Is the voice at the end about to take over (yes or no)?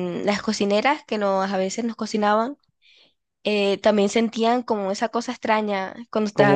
yes